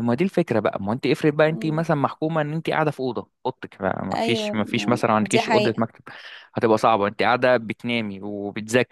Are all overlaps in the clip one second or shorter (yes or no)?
no